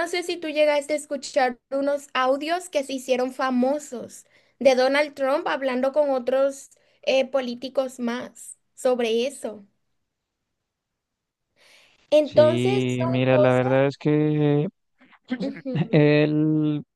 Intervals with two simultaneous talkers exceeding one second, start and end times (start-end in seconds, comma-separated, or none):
12.2-13.7